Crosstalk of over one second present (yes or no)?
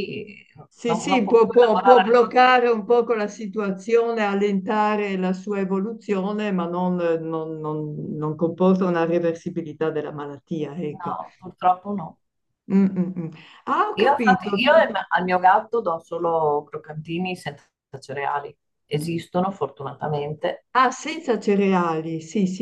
yes